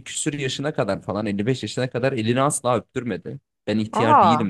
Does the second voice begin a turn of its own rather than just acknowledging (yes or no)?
no